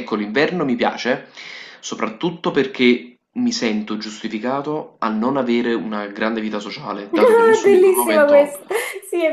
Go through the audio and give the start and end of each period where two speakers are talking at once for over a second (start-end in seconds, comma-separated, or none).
7.1-8.6